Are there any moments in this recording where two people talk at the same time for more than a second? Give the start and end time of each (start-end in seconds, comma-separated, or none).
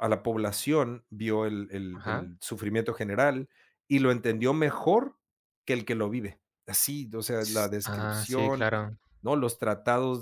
7.4-8.7